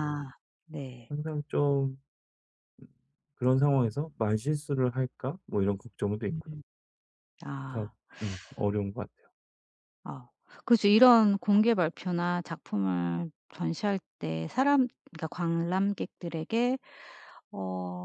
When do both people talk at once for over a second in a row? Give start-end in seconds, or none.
none